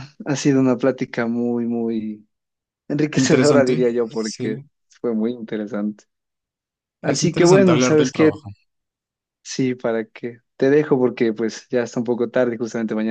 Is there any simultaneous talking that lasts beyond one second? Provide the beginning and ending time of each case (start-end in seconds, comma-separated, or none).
3.1-4.6, 7.0-8.3